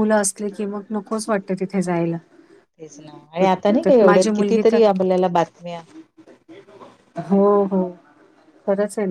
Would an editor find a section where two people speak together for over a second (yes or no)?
yes